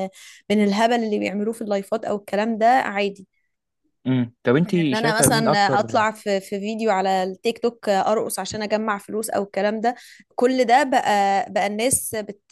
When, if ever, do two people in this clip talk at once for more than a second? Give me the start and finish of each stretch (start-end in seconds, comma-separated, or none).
4.6-6.1